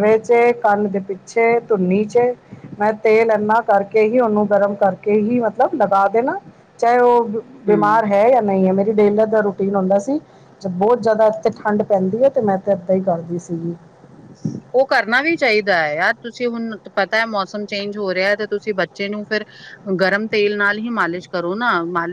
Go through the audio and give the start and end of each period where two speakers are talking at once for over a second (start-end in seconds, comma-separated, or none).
none